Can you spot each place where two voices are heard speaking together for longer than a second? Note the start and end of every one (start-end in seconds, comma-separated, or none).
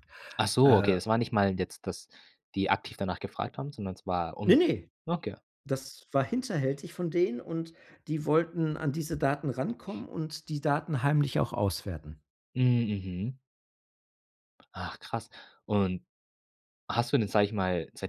none